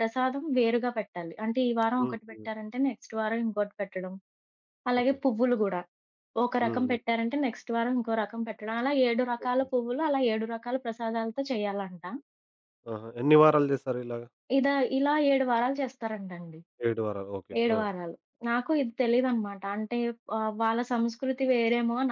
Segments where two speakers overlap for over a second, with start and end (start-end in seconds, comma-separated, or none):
none